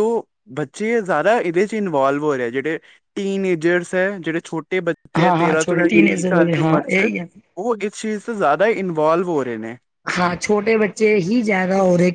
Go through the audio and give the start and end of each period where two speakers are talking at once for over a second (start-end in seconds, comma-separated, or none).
5.2-7.1